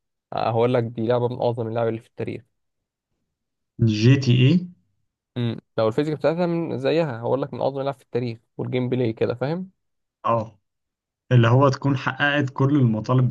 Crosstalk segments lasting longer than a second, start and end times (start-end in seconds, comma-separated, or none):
none